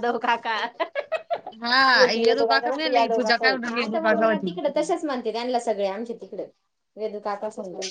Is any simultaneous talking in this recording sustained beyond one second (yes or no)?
yes